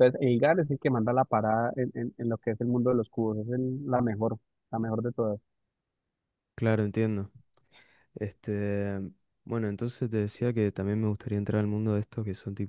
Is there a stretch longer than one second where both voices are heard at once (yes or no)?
no